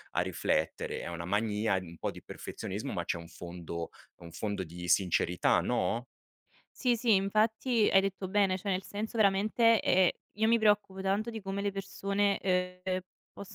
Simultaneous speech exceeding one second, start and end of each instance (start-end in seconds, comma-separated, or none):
none